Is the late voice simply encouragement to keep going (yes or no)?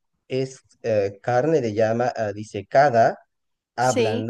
yes